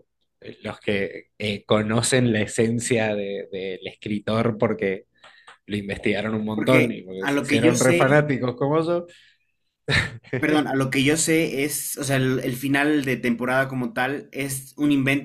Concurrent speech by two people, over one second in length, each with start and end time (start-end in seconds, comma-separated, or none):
6.5-8.2